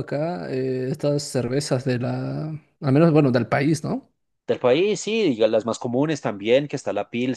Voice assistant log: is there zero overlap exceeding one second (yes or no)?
yes